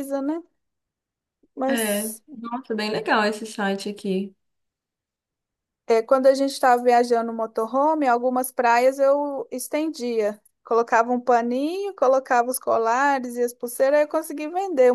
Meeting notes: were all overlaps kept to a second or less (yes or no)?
yes